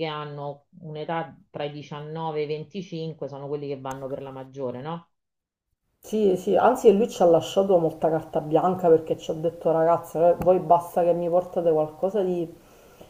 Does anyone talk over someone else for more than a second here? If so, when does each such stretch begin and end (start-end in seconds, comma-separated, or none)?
none